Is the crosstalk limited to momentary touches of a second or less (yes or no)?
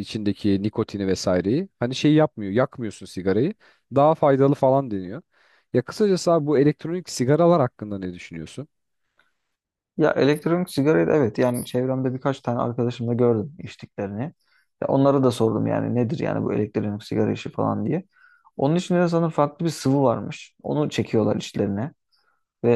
yes